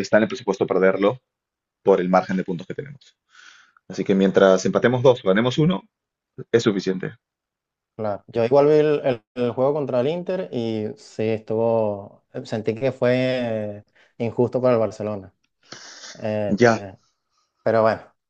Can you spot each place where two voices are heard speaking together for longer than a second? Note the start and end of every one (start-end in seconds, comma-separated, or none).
none